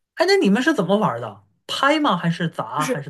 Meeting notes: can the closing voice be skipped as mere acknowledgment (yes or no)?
no